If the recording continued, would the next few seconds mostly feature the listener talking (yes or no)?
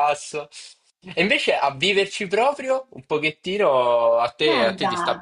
yes